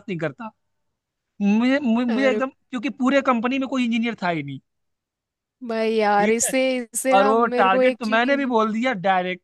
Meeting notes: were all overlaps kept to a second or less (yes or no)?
no